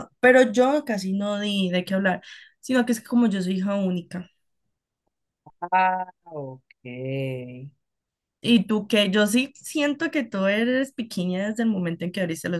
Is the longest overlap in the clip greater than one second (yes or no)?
no